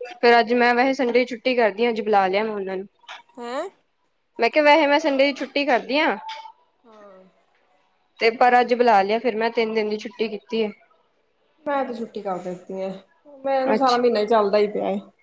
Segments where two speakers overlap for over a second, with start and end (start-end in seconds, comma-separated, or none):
none